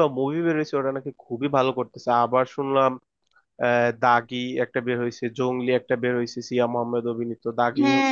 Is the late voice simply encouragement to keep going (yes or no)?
no